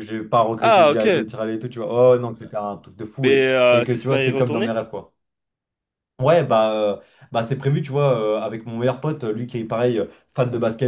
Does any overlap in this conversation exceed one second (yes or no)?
yes